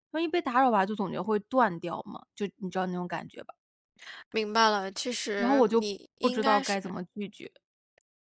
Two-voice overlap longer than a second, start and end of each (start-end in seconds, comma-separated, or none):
5.4-6.8